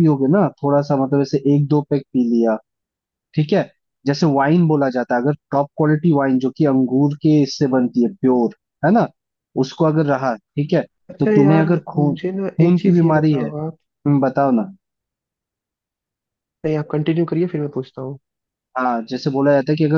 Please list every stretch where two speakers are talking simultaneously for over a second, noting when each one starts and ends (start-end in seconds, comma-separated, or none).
11.2-13.5